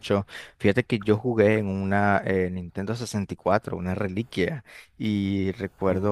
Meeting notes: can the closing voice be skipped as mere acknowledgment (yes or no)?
yes